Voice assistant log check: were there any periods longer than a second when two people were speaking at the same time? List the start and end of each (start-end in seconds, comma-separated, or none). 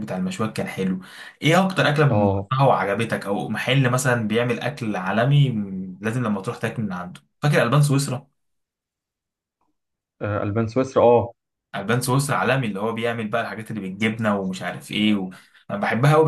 none